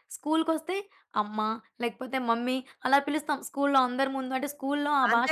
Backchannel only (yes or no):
no